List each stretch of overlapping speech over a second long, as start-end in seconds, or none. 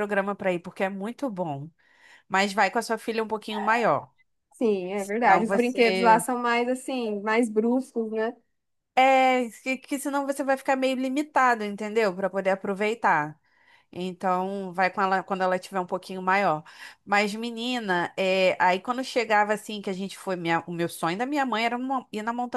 4.9-6.2